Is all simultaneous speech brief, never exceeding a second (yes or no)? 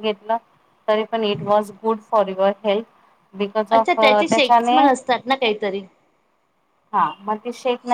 yes